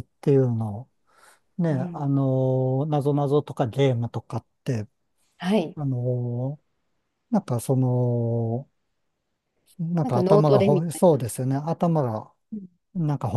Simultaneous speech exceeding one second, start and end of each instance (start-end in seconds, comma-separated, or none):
10.0-11.2